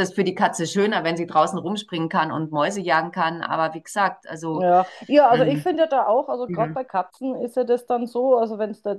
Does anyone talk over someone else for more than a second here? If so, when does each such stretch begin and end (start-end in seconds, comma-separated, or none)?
none